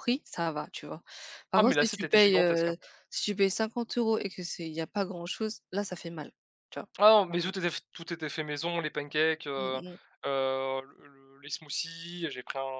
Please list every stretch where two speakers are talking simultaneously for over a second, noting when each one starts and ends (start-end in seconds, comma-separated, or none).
1.5-2.8